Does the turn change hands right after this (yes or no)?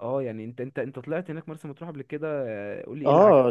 yes